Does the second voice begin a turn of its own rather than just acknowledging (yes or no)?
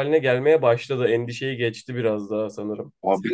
yes